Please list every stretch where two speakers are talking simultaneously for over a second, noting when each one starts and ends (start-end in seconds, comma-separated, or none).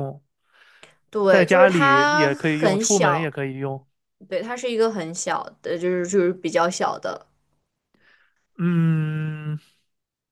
1.3-3.4